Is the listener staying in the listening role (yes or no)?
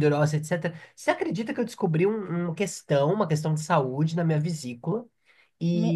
yes